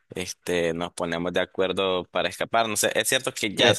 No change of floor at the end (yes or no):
yes